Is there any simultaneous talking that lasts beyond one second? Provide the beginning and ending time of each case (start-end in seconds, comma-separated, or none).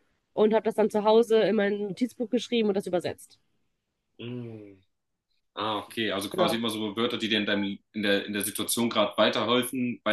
none